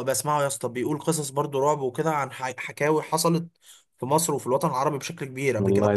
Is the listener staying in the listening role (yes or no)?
yes